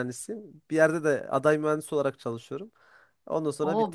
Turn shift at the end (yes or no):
yes